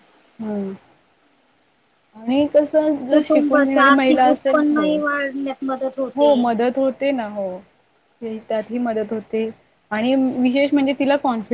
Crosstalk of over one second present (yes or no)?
yes